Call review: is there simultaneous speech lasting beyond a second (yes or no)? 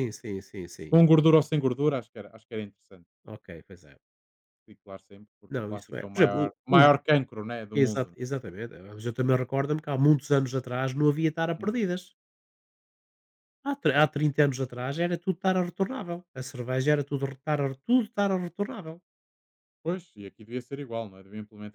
yes